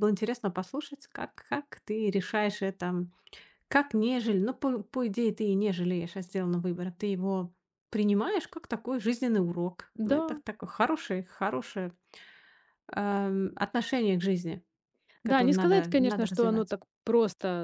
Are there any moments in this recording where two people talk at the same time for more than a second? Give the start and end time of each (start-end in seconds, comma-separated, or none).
15.2-16.8